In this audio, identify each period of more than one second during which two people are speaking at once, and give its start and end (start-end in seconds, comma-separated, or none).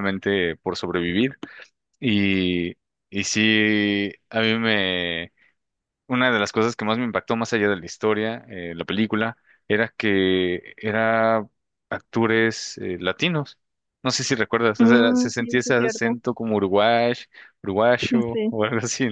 14.8-16.2